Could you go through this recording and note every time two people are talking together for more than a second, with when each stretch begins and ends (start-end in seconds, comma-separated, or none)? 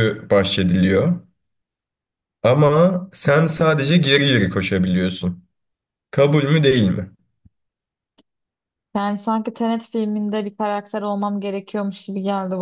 none